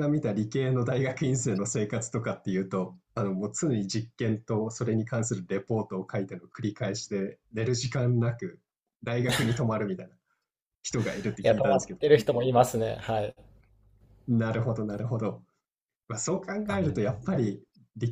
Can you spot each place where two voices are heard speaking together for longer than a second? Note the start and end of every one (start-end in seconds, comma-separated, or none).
none